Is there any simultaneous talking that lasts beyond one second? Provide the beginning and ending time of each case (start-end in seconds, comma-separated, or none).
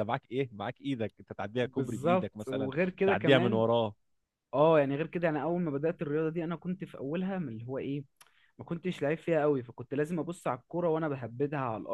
1.6-3.6